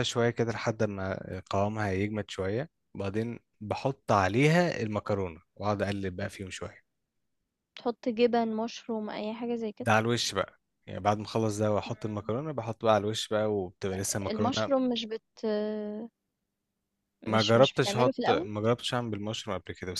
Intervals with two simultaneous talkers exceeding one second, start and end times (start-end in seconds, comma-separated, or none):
17.3-18.5